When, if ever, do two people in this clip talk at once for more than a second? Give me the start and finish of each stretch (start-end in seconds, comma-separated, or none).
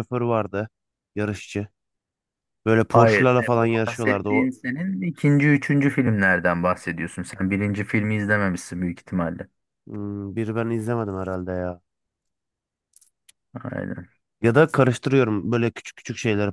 2.9-4.5